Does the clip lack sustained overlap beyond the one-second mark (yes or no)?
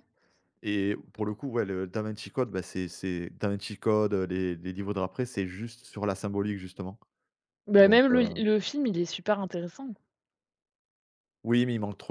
yes